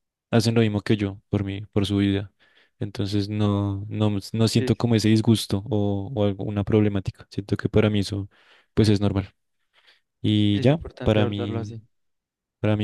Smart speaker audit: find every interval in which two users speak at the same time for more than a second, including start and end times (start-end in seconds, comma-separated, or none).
10.5-11.8